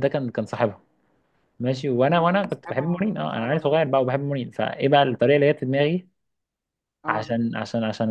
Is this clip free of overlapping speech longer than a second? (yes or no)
no